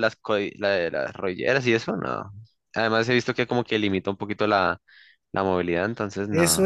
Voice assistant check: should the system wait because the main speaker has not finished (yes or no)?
no